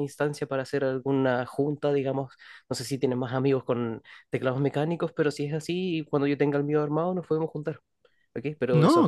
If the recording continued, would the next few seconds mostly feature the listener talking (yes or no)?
no